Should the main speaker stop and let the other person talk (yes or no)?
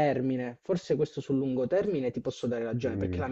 no